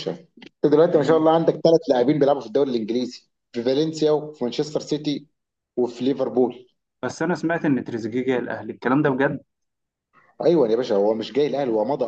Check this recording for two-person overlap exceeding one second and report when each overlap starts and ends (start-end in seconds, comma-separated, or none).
none